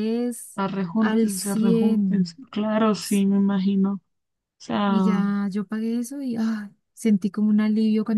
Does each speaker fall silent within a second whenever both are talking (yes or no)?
no